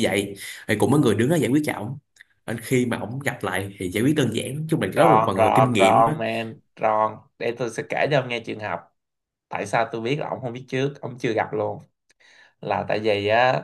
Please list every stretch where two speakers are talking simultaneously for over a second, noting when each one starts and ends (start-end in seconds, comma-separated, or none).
5.0-6.2